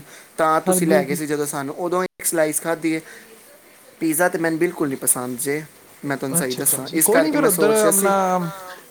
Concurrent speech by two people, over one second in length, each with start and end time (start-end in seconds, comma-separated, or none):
6.4-8.1